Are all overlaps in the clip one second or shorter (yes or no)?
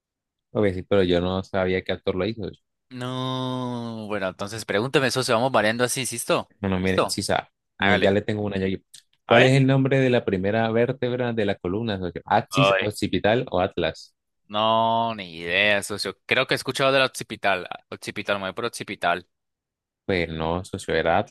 yes